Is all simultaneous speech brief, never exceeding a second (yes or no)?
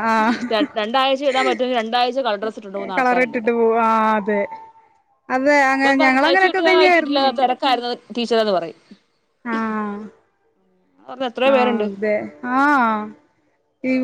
no